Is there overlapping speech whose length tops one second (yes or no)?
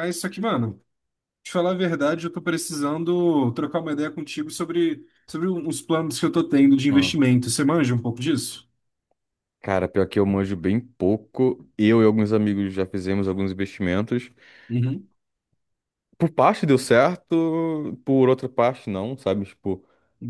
no